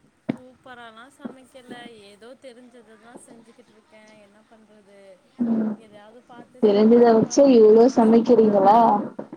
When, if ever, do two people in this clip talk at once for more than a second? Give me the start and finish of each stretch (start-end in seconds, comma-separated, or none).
6.6-8.7